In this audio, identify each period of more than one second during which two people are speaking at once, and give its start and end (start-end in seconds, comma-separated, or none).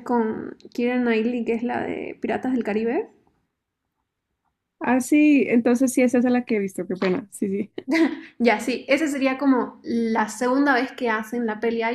none